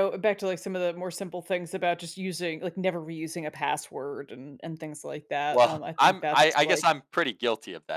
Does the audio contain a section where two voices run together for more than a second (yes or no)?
yes